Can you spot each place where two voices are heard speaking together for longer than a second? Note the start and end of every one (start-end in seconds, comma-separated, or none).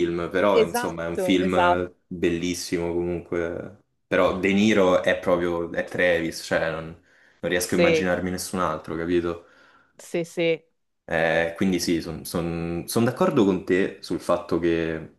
0.5-1.9